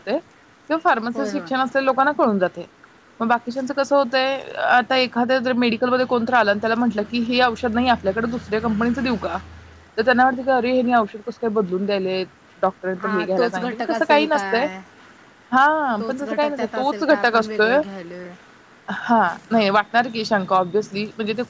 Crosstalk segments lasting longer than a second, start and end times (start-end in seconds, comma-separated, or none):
13.0-14.7, 16.0-17.8